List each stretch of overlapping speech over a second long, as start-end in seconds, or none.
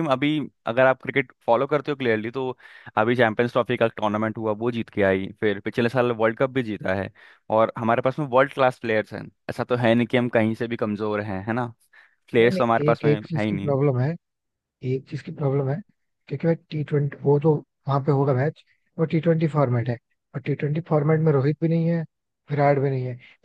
12.4-13.7